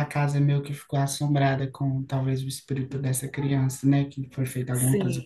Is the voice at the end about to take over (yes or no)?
yes